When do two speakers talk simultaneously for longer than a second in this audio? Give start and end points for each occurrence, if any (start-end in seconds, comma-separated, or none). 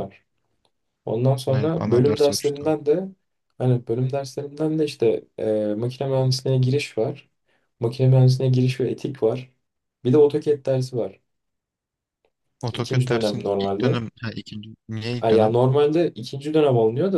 1.5-2.7, 12.7-14.0